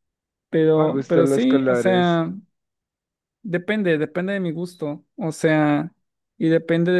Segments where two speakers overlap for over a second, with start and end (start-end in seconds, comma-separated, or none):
0.7-2.2